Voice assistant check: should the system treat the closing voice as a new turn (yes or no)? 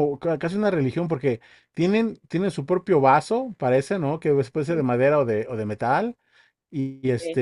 no